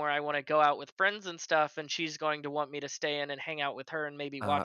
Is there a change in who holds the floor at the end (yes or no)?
no